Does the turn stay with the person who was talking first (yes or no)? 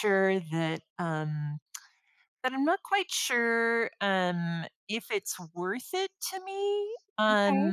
yes